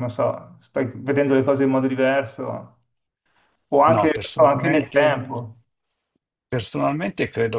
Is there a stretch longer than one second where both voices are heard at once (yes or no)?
yes